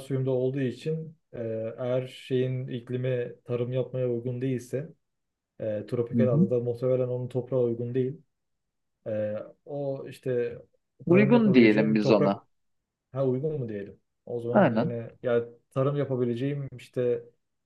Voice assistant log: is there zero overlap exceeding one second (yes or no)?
no